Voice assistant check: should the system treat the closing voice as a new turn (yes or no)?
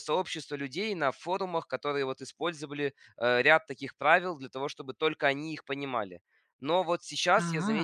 no